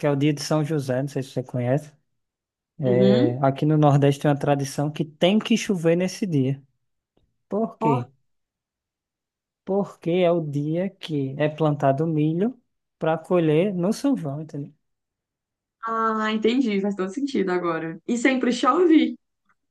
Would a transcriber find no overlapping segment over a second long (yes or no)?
yes